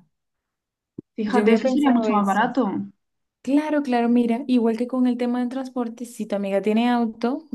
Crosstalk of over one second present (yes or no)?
yes